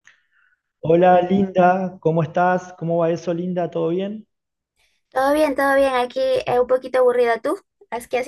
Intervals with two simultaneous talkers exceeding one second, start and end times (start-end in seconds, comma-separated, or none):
none